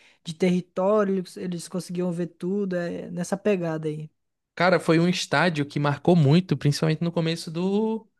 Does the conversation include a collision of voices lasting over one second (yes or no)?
no